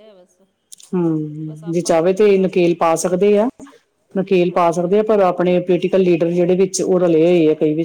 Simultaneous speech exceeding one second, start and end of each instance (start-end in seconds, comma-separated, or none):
1.5-2.8